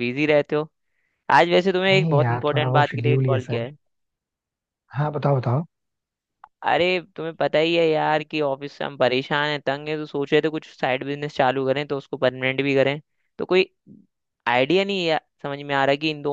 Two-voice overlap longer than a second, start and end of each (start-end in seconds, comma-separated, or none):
1.9-3.6